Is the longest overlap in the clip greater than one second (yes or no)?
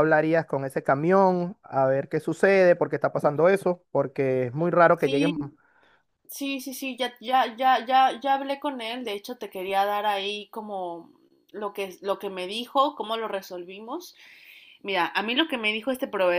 no